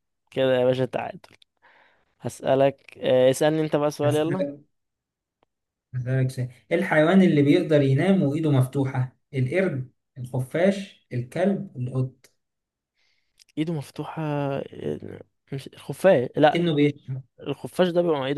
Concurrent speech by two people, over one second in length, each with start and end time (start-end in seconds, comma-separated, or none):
none